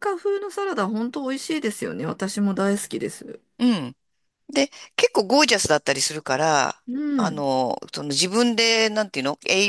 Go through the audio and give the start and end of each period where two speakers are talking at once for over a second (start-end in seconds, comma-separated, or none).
none